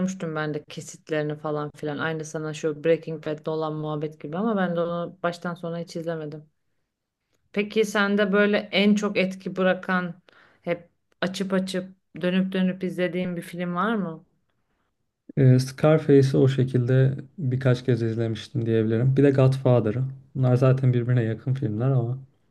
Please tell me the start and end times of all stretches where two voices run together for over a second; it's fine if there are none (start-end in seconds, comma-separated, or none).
none